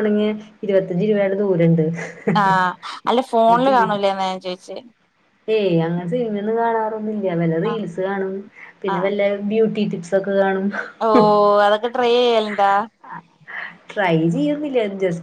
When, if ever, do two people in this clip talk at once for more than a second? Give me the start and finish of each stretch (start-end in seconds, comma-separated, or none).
none